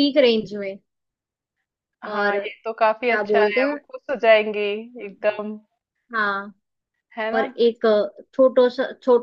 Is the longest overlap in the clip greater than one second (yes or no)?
yes